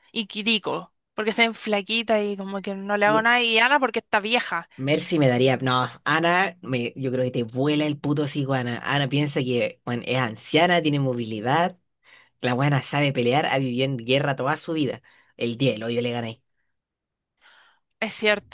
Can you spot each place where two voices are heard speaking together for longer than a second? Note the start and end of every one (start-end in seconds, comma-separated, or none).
none